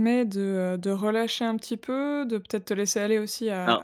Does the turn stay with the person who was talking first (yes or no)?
yes